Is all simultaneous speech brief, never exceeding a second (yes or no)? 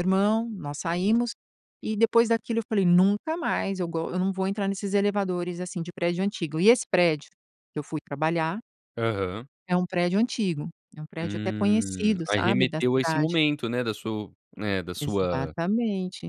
no